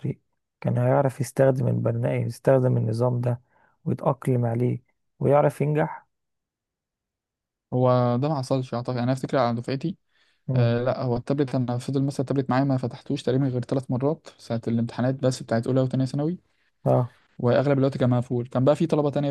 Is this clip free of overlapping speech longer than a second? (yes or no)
yes